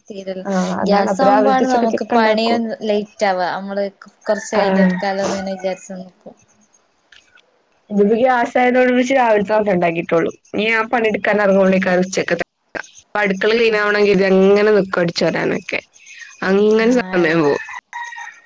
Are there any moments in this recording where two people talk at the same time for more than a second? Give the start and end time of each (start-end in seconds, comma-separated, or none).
0.9-2.6